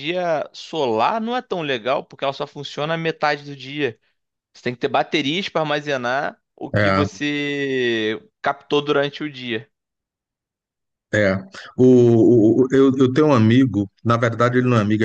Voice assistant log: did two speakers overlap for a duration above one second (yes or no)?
no